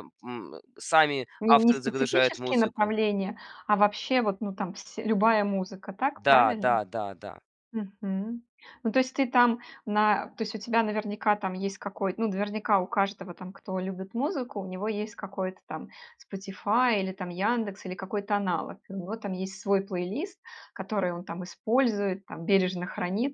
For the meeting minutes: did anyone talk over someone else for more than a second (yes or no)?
yes